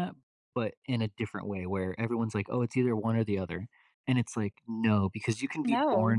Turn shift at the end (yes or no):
no